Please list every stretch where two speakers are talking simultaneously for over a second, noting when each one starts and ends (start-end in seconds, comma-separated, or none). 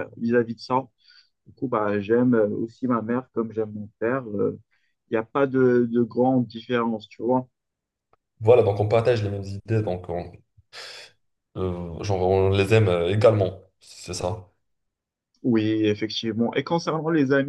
none